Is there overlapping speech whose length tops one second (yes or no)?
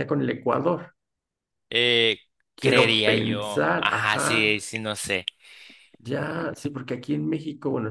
yes